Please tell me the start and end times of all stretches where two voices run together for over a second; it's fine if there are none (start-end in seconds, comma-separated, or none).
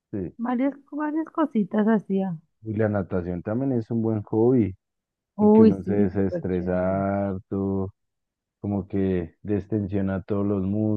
5.4-7.0